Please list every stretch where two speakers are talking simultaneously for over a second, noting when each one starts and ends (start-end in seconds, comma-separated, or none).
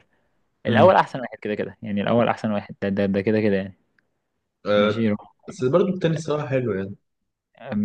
none